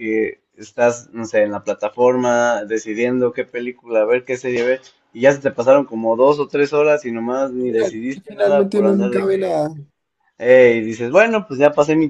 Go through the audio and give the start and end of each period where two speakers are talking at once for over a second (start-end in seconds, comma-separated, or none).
7.7-9.6